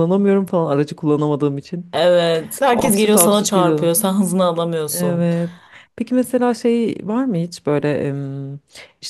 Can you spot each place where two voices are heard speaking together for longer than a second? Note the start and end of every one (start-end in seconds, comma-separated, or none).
2.7-3.9